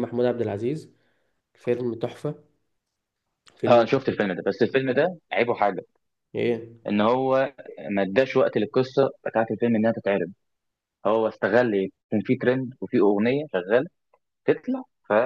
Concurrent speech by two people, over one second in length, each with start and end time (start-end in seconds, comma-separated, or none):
none